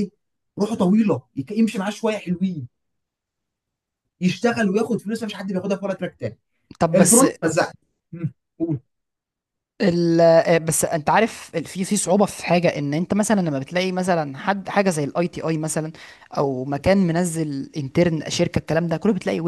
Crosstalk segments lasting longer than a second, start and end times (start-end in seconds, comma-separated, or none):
none